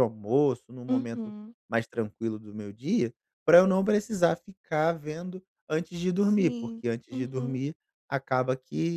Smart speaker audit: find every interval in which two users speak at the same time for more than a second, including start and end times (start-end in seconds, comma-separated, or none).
6.2-7.6